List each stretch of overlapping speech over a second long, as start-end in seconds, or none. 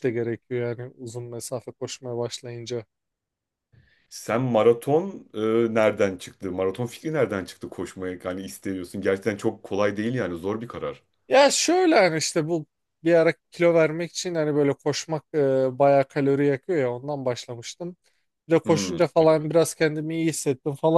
none